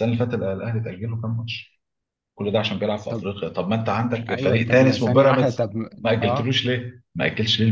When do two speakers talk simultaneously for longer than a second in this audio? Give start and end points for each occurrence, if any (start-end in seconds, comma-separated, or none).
4.3-6.6